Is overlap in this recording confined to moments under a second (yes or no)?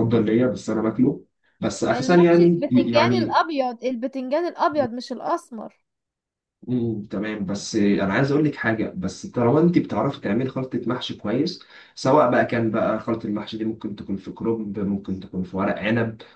no